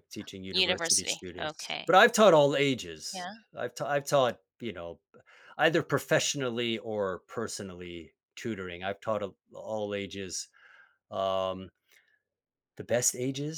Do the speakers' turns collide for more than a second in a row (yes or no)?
yes